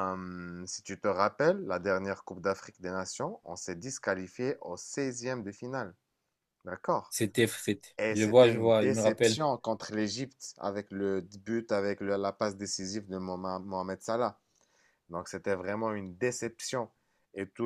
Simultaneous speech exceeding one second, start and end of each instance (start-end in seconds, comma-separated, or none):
8.0-9.4